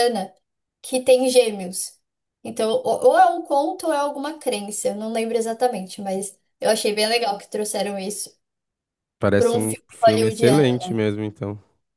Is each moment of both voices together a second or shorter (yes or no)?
no